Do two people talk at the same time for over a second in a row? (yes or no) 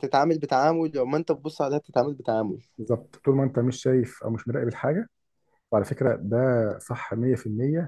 no